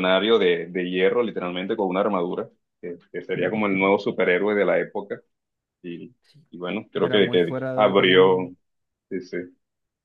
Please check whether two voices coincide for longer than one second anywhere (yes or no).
yes